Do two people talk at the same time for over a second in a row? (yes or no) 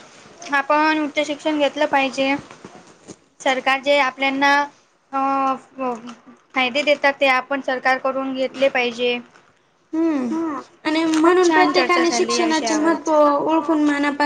yes